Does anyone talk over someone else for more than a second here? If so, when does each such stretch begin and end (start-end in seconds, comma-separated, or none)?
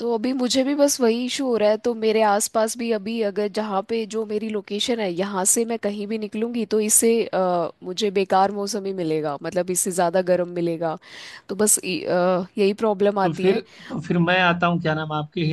none